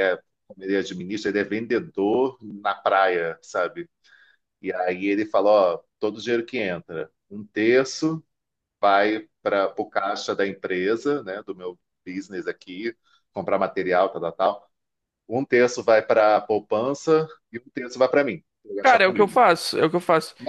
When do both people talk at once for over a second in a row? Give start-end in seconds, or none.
none